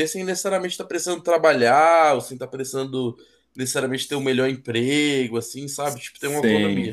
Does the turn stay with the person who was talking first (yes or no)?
no